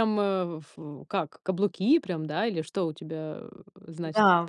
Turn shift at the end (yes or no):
yes